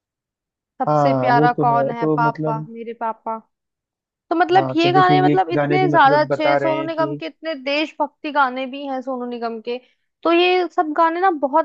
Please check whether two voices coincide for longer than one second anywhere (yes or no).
yes